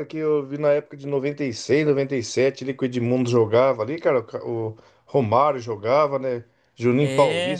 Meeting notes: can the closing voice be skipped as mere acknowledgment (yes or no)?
yes